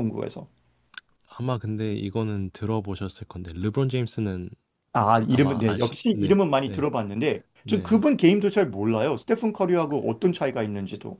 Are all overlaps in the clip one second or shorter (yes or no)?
no